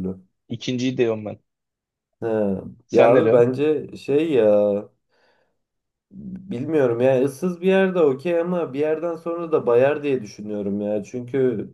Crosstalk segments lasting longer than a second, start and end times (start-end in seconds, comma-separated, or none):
none